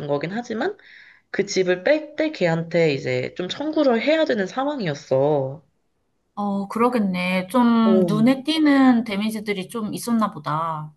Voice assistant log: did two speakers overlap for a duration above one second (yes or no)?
no